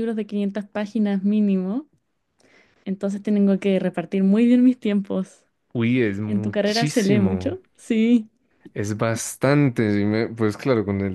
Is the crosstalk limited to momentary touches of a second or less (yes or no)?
no